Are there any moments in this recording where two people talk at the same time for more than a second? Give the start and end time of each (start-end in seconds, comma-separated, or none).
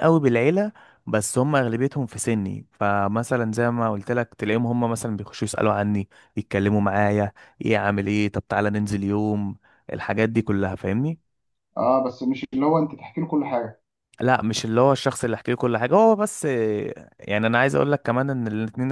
none